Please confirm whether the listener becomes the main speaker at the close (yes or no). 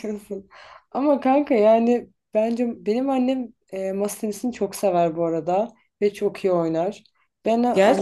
no